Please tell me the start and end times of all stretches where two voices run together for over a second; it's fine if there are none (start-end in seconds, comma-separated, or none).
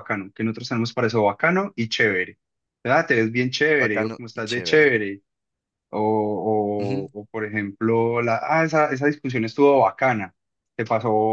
3.8-5.0